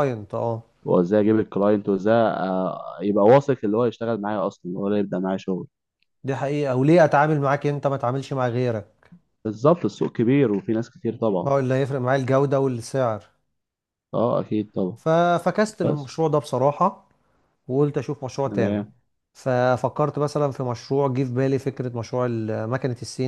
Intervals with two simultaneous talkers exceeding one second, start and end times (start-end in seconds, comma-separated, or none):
none